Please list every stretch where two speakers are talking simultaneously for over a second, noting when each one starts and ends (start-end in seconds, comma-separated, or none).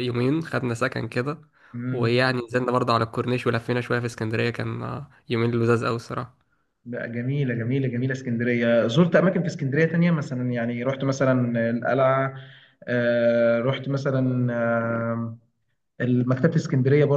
none